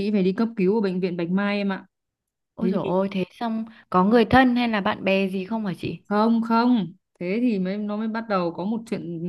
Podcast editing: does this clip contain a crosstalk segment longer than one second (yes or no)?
no